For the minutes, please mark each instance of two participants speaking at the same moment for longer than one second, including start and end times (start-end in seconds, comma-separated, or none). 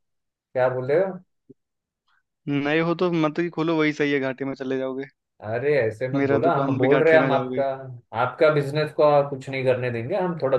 6.2-7.6